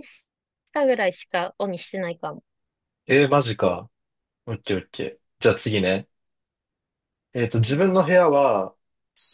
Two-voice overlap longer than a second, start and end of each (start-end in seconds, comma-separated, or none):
none